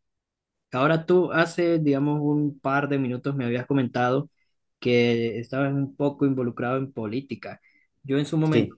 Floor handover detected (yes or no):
no